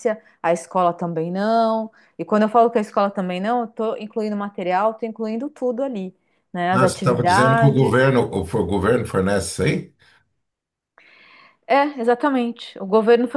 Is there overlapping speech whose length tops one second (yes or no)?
yes